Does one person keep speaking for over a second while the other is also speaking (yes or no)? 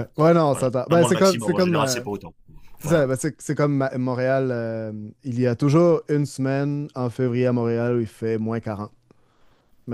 yes